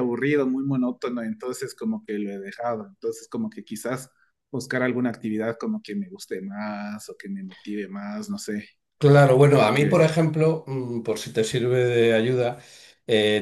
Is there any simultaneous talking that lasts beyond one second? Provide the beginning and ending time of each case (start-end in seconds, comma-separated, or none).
none